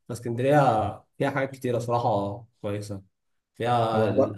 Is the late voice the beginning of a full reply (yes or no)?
no